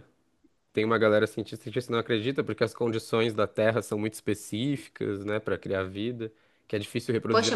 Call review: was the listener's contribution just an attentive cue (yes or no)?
yes